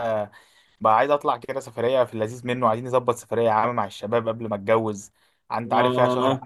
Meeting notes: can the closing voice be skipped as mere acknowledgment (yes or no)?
no